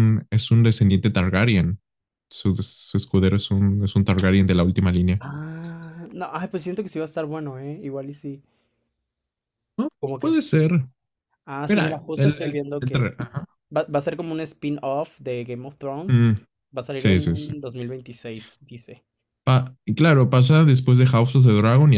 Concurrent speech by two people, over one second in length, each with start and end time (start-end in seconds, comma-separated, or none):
11.7-13.1